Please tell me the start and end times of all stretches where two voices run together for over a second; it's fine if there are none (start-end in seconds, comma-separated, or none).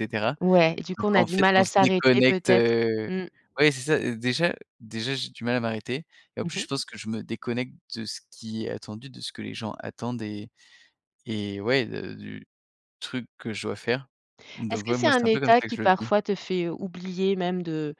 1.0-3.1, 14.7-16.1